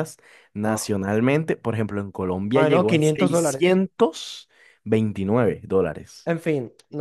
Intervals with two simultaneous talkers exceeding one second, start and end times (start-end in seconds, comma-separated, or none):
2.5-3.8